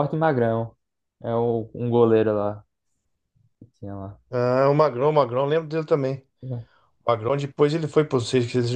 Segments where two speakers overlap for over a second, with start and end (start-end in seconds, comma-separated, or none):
none